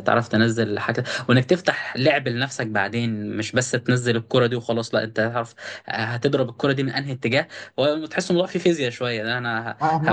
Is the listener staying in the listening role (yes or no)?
yes